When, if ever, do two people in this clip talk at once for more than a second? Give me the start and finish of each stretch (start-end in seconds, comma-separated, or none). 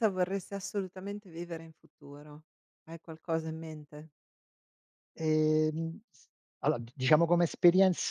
none